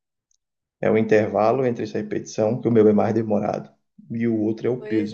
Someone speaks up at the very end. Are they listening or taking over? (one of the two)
taking over